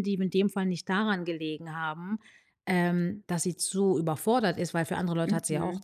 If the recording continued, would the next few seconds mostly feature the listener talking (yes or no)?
yes